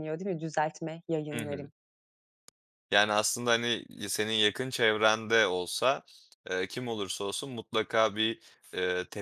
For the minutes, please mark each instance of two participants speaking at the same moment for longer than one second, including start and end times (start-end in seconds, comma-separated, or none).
none